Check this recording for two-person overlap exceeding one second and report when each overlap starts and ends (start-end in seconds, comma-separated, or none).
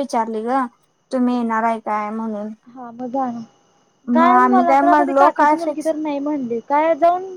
4.2-5.9